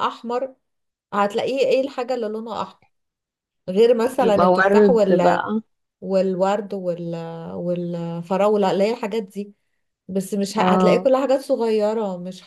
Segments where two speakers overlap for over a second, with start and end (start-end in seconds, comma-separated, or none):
4.2-5.5